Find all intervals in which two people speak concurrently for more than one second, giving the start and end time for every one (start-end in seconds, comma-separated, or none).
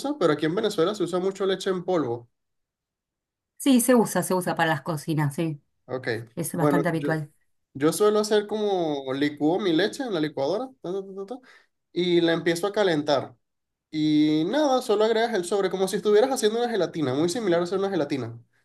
none